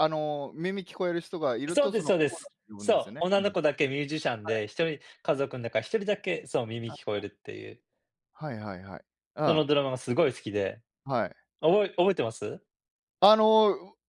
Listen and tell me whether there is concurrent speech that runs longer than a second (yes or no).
yes